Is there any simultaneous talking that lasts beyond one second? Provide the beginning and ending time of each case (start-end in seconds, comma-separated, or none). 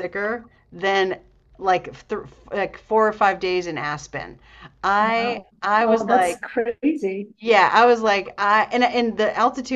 5.0-6.4